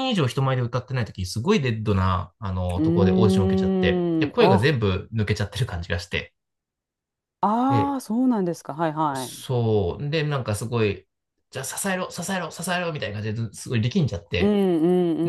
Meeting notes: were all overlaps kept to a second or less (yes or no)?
no